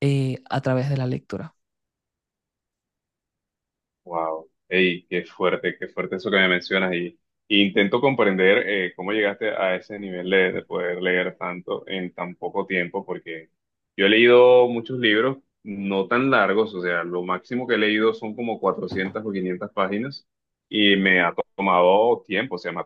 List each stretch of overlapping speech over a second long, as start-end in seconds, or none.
none